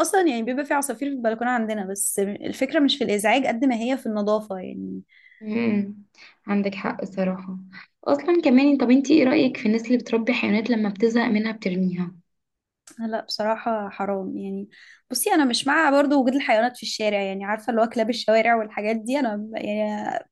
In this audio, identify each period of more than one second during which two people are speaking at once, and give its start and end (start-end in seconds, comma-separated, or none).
none